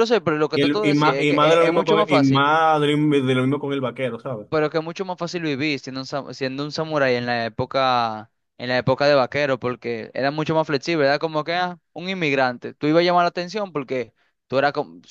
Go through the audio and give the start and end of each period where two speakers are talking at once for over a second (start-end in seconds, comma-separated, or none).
0.5-2.5